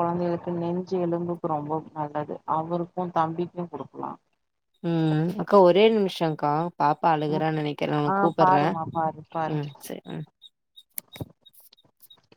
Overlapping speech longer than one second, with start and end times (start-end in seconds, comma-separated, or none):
none